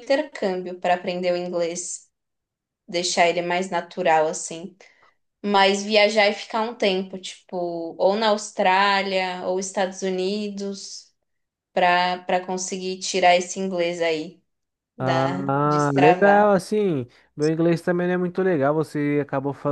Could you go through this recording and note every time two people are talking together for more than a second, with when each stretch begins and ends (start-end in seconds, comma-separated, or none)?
15.0-16.5